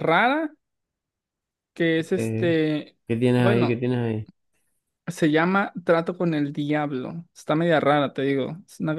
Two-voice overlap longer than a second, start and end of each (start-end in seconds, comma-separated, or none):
none